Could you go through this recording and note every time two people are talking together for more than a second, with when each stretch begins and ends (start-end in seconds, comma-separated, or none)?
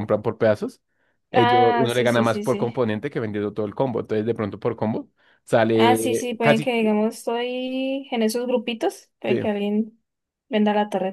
1.3-2.7, 5.7-7.0